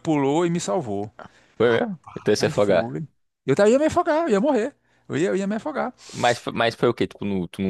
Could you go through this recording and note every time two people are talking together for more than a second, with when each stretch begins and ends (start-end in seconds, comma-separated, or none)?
1.6-3.0